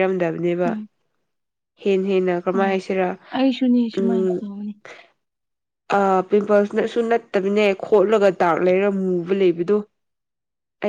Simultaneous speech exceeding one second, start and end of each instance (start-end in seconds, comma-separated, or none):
none